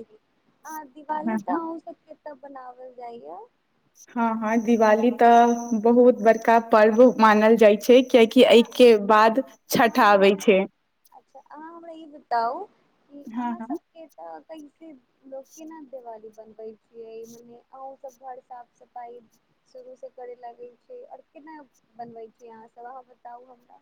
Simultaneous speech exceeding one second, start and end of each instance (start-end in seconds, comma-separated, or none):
none